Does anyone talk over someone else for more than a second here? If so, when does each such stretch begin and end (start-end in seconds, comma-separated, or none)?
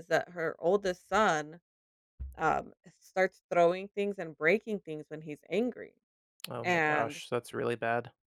none